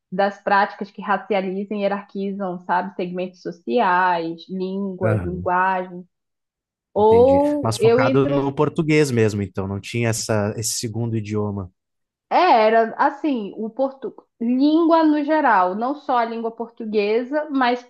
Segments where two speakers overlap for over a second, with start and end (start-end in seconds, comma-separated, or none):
7.0-8.4